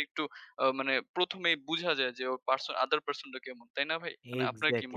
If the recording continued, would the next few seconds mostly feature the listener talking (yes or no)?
yes